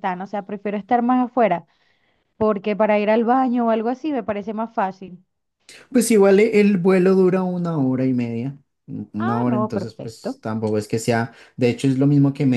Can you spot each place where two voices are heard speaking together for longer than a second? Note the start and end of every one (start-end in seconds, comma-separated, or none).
9.2-10.4